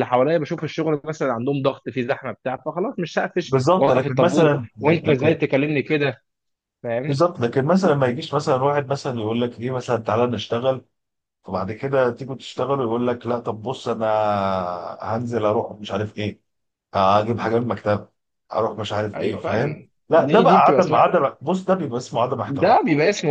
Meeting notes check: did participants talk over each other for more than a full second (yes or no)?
yes